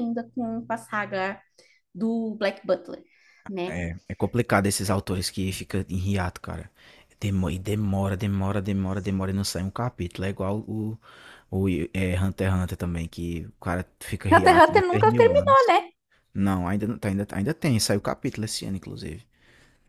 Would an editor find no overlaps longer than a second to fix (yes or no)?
no